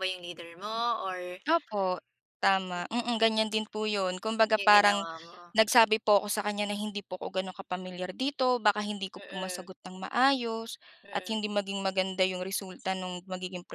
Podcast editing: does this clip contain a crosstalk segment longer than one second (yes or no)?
no